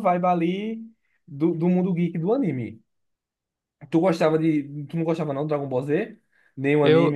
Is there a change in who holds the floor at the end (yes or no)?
yes